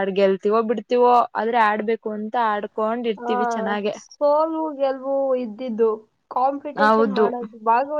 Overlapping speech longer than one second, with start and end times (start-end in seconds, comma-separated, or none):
none